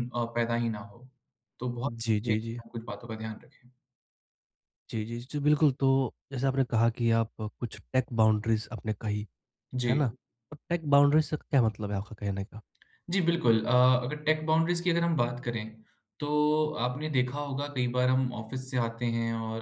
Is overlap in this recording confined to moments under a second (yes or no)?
yes